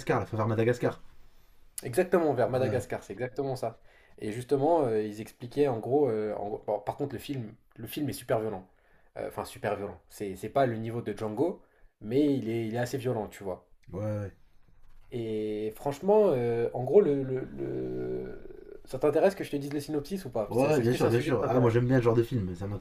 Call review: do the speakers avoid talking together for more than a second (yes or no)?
no